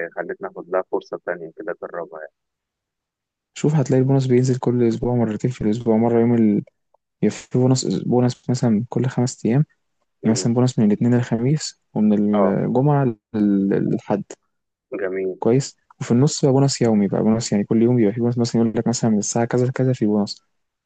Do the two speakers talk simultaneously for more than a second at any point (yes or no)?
no